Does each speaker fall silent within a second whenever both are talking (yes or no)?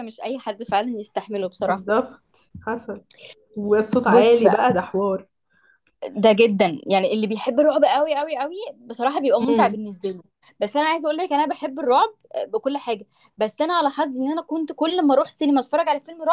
yes